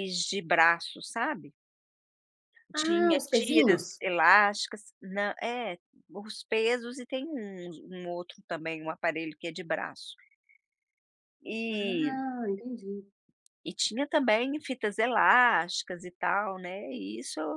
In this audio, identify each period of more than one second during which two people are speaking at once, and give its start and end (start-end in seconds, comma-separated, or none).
2.7-4.0